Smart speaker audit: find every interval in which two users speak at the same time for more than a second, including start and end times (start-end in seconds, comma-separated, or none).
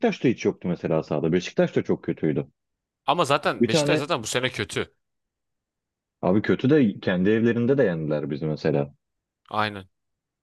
none